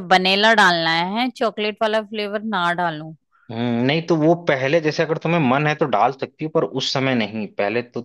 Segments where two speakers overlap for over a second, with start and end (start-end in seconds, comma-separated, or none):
none